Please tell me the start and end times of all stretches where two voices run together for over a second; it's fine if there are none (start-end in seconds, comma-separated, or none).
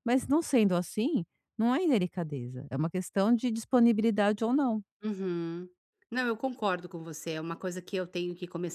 none